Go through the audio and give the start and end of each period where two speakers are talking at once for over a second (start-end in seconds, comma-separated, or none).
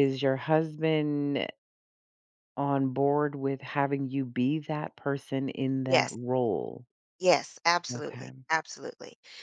none